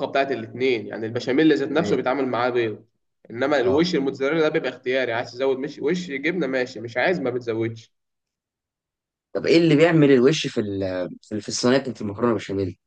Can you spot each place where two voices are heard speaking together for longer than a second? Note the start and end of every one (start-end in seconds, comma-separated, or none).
none